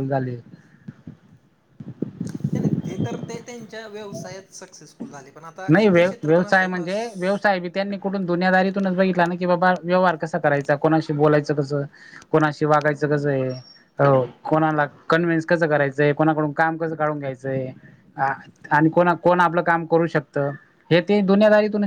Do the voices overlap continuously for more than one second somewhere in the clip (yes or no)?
no